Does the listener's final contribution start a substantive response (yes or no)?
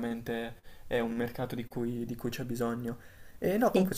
no